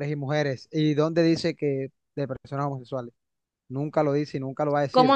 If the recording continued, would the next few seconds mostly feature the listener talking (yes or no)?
yes